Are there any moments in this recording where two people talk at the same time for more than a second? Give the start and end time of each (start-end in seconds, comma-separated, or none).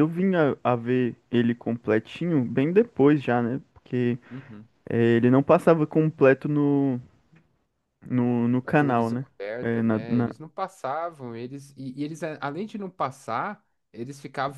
8.6-10.3